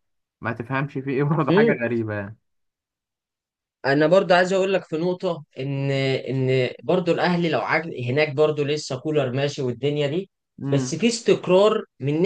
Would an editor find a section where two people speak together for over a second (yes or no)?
no